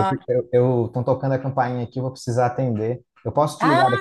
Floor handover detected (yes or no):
yes